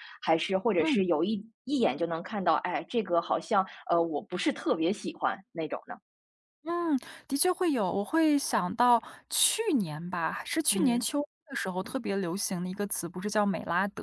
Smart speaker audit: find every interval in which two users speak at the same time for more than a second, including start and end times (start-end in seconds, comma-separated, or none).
none